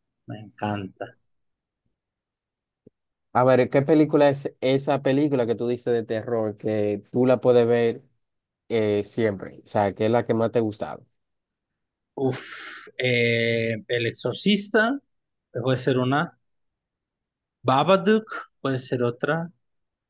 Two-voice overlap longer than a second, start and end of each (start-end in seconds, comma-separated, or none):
none